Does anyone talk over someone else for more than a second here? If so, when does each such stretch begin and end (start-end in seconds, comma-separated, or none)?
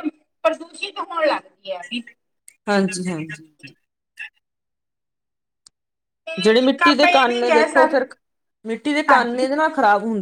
6.4-8.1